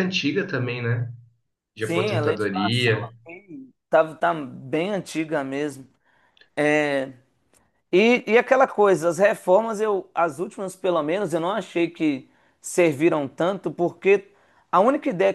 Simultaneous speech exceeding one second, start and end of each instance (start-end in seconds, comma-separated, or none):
1.8-3.1